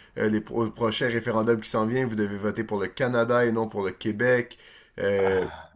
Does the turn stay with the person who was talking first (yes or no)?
yes